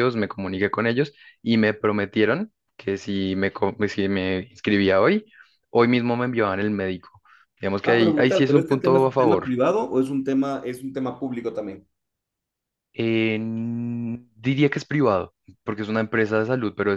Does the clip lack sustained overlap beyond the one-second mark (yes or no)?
no